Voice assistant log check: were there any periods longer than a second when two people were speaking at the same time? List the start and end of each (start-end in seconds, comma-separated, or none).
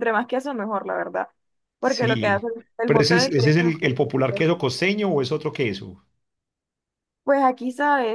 1.8-4.5